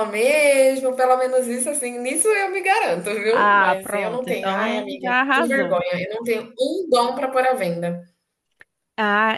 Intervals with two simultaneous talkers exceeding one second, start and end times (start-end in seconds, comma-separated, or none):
3.3-5.8